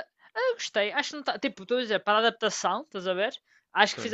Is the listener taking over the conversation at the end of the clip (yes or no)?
no